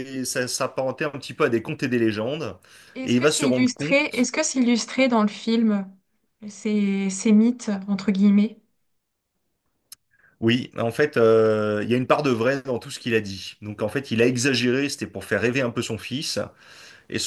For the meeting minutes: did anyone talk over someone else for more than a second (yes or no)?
yes